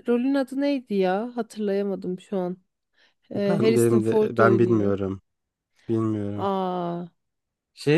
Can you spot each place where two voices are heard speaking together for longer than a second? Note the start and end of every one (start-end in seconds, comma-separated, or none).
3.5-4.9